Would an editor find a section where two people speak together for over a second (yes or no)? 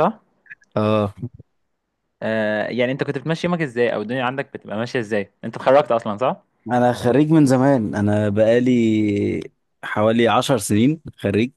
no